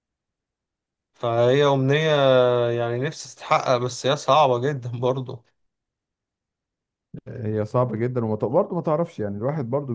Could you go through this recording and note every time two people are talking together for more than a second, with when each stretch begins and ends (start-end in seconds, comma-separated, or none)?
none